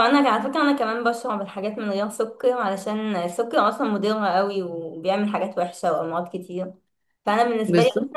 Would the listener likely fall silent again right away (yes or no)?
yes